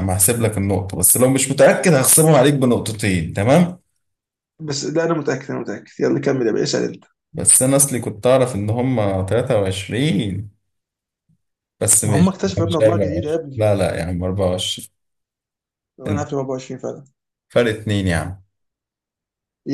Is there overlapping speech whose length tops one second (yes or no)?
yes